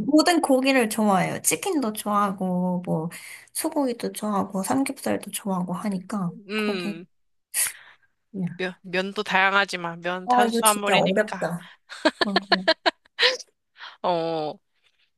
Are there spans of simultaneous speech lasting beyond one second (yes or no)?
yes